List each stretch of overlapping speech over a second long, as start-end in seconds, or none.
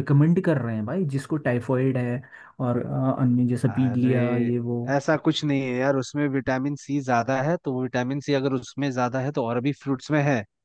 none